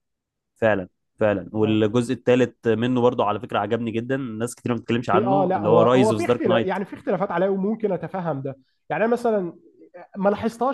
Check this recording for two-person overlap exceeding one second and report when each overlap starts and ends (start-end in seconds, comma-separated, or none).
5.1-6.8